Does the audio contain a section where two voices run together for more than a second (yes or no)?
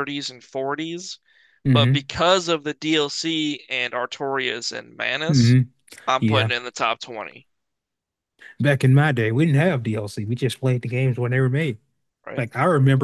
no